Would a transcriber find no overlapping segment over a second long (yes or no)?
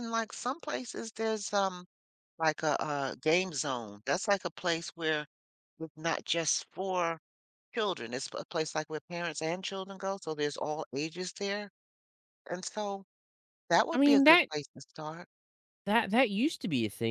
yes